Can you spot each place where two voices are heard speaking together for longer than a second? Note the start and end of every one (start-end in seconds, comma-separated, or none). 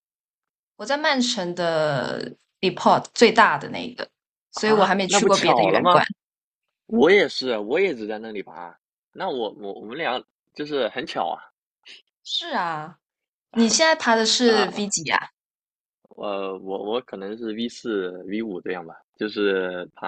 4.5-6.0